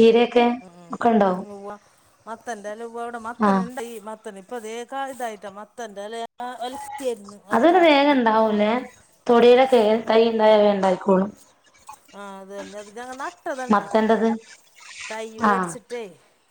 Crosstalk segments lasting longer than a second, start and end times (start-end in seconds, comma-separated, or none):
none